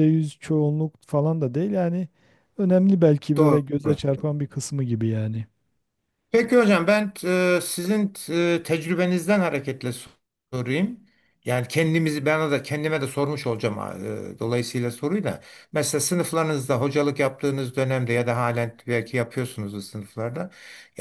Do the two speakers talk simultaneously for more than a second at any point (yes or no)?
no